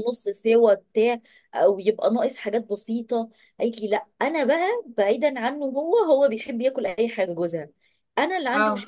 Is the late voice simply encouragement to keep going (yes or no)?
yes